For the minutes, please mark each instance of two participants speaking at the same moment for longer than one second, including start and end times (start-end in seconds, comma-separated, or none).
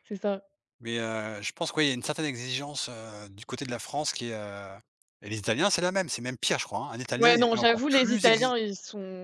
7.2-8.5